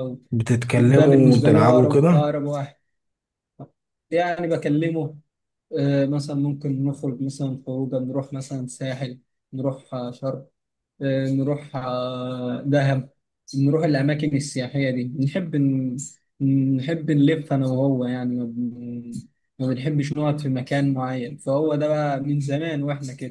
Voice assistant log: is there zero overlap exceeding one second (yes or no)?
no